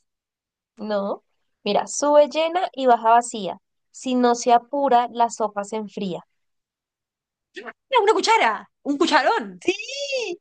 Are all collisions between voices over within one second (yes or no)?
yes